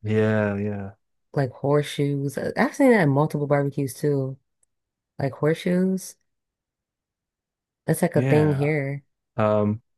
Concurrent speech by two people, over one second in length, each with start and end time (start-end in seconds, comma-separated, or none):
none